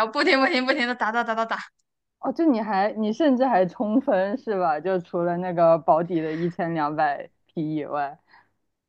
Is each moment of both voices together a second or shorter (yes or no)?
yes